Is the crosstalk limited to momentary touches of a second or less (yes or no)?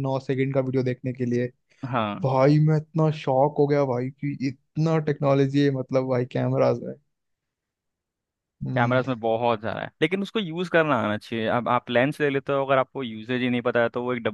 yes